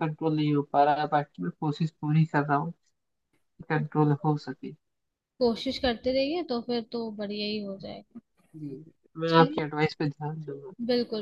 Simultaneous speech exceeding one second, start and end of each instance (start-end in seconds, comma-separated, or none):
none